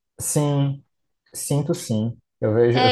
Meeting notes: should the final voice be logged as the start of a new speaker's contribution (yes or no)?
no